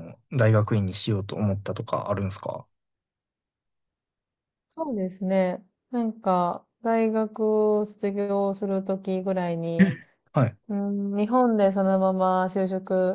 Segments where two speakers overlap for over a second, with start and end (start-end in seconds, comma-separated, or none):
none